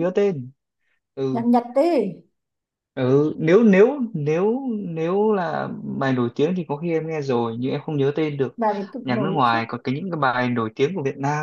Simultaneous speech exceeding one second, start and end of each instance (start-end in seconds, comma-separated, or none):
none